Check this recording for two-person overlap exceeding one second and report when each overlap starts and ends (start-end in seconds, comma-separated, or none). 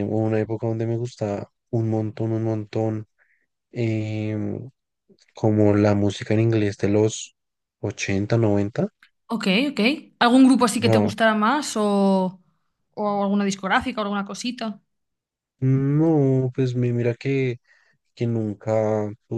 none